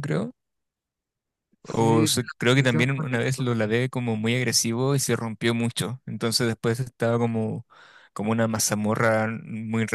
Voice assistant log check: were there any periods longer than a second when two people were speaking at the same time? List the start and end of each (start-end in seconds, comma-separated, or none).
1.6-3.5